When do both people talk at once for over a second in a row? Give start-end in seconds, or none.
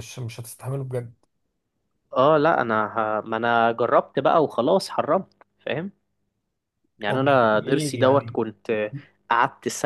7.1-8.4